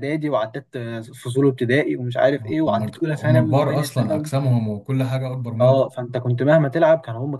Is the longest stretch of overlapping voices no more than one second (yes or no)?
no